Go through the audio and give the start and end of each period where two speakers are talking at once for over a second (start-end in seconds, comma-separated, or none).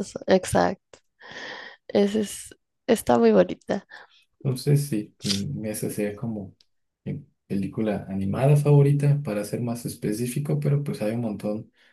none